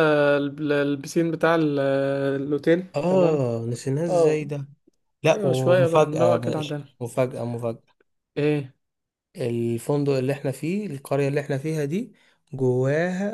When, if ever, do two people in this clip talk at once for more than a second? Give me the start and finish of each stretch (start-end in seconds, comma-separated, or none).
5.3-6.9